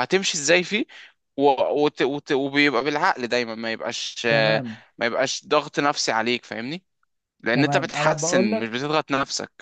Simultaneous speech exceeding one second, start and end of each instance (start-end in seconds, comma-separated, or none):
7.5-8.8